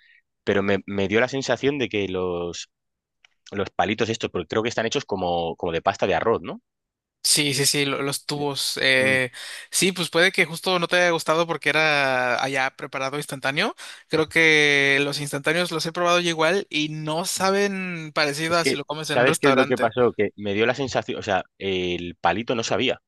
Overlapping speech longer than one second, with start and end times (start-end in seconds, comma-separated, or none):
18.5-19.9